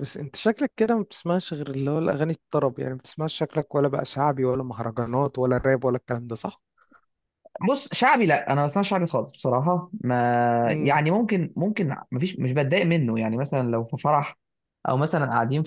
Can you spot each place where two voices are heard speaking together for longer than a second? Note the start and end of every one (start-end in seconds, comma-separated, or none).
none